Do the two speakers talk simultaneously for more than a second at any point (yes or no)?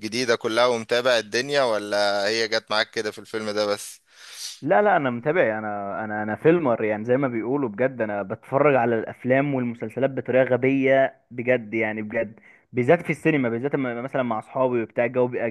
no